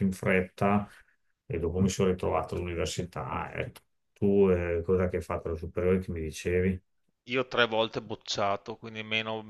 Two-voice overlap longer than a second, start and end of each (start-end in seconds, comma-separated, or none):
none